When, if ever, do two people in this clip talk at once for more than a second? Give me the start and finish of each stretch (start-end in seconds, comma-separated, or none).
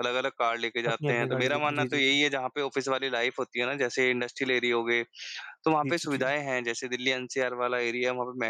0.9-2.2